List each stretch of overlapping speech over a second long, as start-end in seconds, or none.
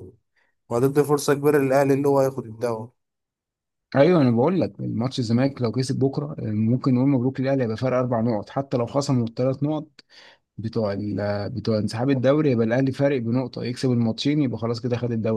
none